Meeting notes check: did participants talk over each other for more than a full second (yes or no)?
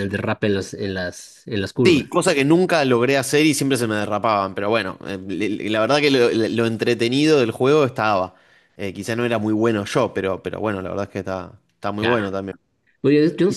no